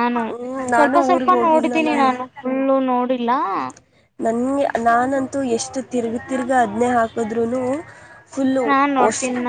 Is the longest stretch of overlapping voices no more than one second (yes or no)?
no